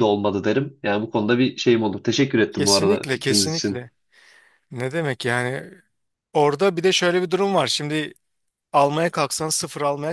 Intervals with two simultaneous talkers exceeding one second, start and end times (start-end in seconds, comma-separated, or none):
2.5-3.8